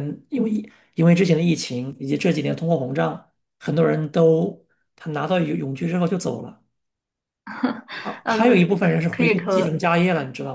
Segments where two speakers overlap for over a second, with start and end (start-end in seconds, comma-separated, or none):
8.2-9.8